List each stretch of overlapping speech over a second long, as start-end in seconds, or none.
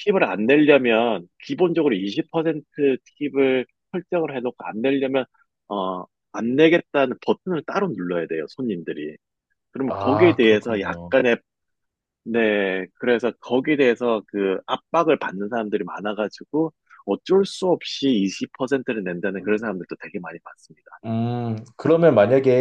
9.9-11.1